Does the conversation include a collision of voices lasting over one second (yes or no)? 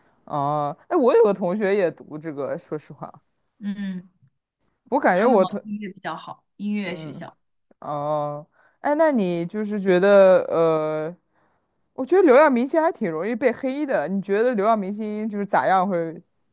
no